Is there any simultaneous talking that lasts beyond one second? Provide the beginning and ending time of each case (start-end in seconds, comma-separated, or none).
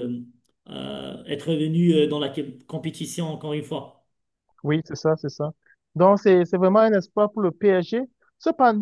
none